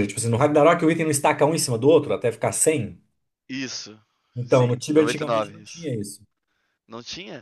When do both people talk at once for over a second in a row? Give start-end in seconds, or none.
4.5-5.9